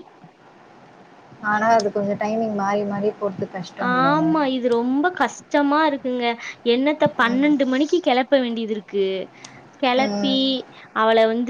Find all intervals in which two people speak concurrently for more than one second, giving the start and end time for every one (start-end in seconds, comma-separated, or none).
none